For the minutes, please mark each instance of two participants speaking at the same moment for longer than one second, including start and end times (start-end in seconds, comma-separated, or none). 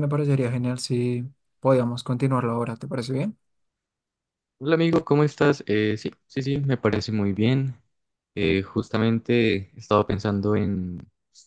none